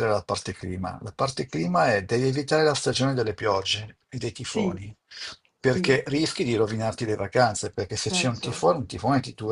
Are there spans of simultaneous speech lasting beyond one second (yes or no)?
no